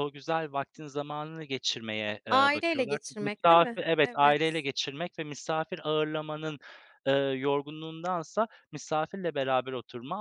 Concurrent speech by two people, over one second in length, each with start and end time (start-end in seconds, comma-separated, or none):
2.3-4.6